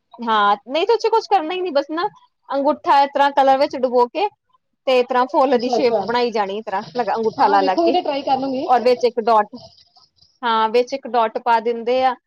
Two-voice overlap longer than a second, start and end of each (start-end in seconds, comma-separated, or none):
none